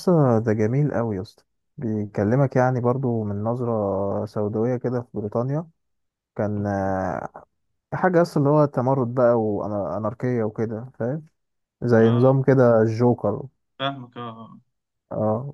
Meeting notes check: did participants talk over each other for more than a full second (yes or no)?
no